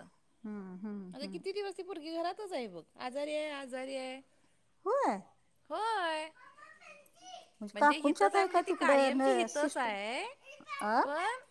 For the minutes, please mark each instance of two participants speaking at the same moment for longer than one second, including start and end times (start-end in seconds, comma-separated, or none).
7.8-9.9